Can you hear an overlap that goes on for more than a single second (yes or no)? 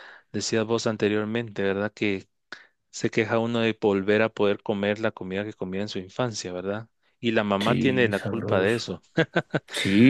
yes